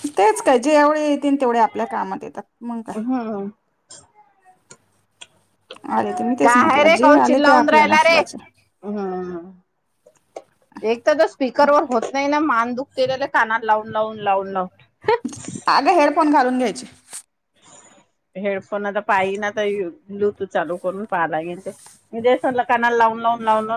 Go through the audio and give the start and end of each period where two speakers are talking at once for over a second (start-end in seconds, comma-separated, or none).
6.5-8.2